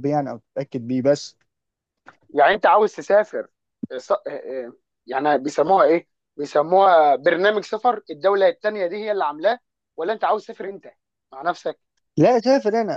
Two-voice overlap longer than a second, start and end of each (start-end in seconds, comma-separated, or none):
none